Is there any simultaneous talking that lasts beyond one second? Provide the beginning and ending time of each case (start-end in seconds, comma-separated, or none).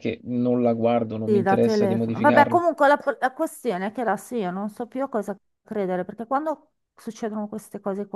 1.2-2.6